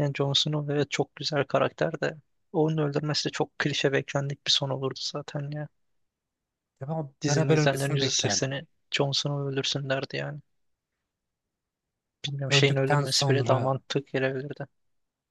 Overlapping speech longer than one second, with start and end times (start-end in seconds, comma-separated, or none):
7.2-8.5, 12.5-13.8